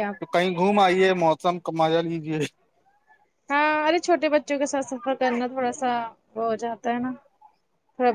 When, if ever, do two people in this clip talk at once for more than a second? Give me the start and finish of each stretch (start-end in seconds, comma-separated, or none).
none